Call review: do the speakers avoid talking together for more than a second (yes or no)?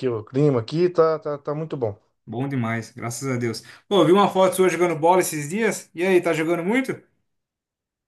yes